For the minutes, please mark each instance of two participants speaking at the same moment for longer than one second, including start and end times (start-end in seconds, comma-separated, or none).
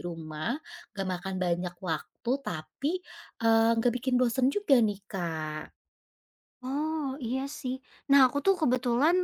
none